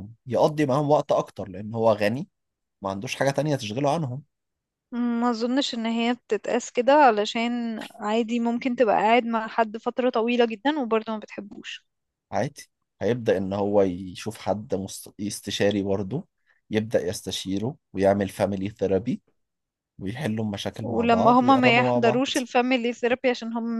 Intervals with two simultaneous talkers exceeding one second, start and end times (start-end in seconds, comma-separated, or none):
20.8-22.2